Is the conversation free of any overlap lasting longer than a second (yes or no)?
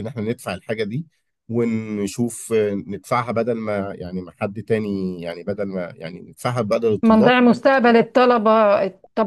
yes